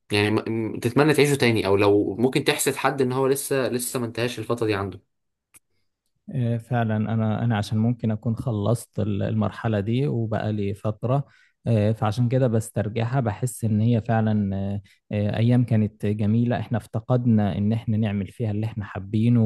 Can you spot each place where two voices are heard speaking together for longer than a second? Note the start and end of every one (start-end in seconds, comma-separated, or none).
none